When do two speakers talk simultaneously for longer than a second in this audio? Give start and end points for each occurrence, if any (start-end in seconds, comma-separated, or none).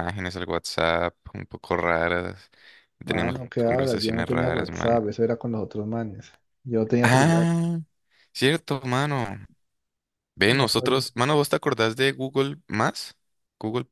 3.0-5.0